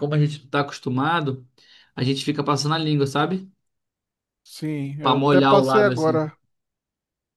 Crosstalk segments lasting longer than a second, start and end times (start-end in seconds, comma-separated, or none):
5.0-6.3